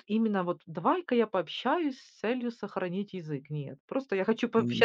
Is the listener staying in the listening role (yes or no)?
no